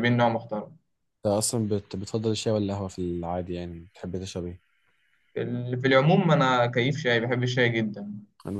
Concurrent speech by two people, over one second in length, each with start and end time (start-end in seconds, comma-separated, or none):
none